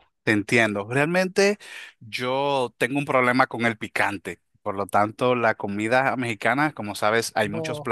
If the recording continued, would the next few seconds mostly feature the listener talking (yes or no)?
no